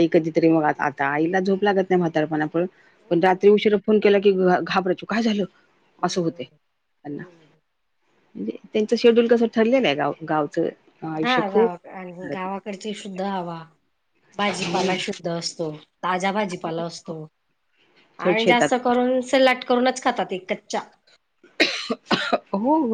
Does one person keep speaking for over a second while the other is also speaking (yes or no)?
yes